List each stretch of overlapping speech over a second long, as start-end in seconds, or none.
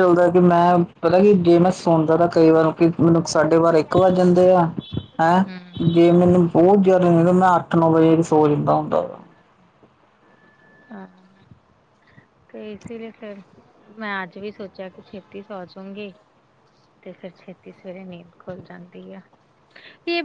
none